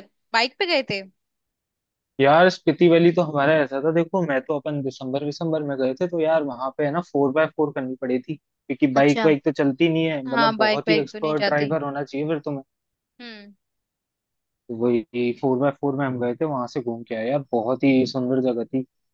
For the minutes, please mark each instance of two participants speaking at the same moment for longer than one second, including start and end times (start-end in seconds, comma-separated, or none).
10.2-11.8